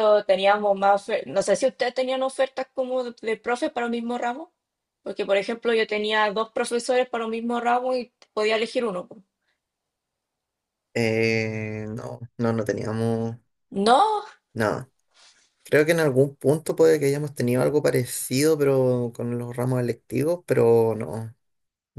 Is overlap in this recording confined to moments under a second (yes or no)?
yes